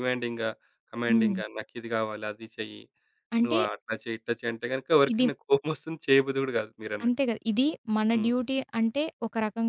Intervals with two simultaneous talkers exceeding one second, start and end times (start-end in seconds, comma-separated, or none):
none